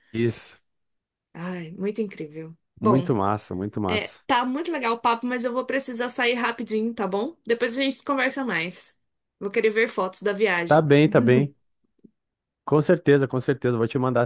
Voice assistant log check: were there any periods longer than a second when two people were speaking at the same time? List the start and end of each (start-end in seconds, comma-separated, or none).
none